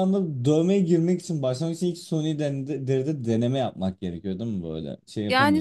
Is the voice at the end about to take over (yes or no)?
yes